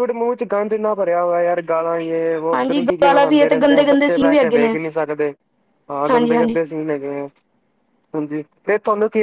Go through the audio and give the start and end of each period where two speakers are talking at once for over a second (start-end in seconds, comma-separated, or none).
2.5-4.8